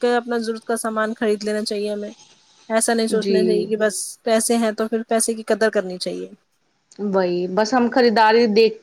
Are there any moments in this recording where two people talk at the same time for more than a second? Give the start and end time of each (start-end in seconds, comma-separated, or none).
none